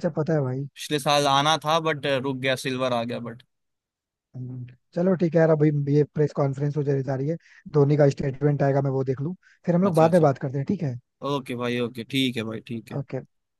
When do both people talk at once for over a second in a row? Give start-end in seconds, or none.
none